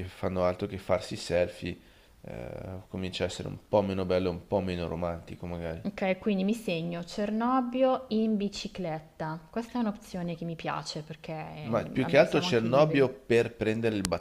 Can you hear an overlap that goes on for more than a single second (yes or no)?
yes